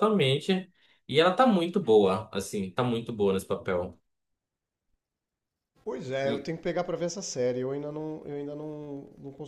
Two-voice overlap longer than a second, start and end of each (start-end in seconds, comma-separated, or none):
none